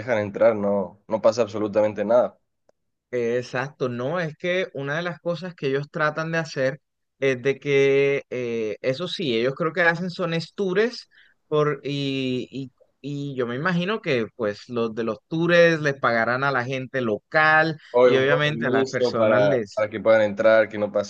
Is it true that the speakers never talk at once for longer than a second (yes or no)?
no